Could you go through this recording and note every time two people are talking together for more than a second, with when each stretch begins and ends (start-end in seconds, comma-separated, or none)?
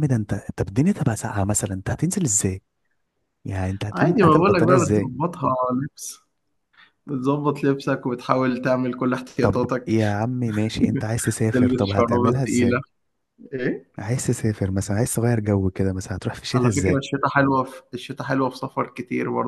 3.9-5.1, 11.5-12.8